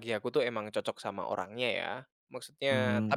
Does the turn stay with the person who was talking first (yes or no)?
yes